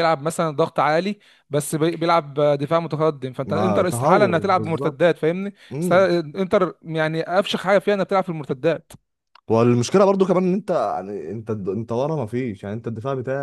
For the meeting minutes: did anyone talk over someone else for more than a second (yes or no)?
yes